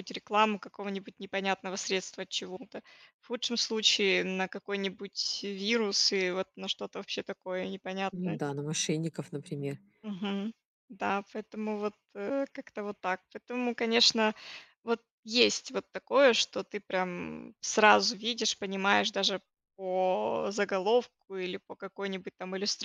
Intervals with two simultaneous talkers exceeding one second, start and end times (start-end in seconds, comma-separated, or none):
none